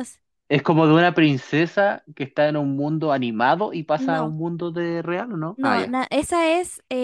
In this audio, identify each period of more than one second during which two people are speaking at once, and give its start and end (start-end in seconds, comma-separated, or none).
none